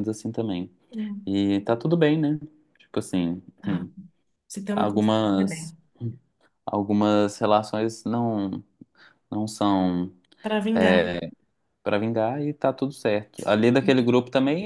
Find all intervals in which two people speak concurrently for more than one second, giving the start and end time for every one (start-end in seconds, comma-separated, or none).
none